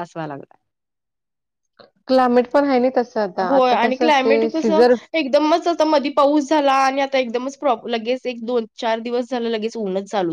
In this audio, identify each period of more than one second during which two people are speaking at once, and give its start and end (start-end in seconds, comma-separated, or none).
3.5-4.8